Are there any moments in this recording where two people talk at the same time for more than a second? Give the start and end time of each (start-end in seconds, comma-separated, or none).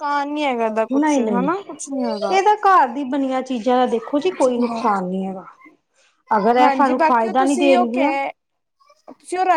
6.6-8.1